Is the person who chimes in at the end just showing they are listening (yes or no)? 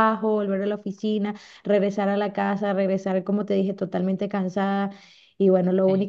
yes